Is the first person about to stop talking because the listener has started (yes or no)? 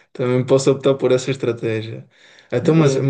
no